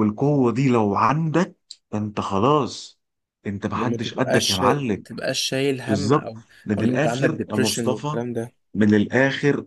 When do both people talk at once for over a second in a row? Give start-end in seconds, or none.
3.7-5.0, 5.9-8.2